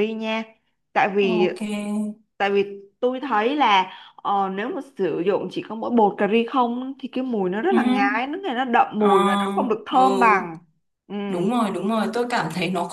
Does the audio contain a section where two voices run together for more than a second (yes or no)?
yes